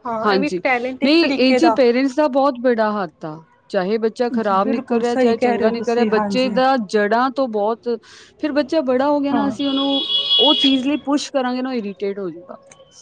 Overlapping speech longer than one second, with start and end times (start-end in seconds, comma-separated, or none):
4.3-6.5